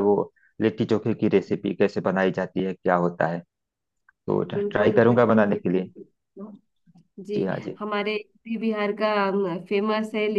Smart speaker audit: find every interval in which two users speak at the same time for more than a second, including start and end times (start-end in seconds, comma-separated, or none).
4.5-5.8